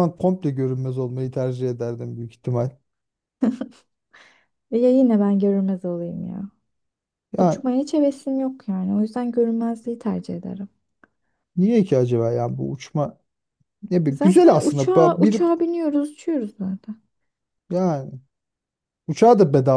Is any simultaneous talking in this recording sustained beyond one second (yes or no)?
yes